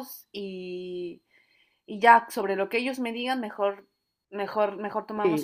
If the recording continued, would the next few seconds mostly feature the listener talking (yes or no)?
yes